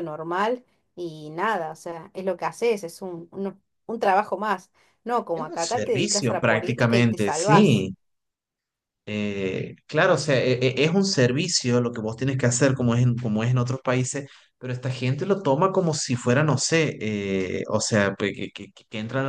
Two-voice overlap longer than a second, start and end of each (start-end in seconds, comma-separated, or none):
5.3-7.9